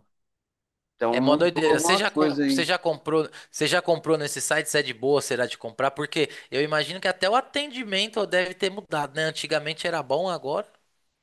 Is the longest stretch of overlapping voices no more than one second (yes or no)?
no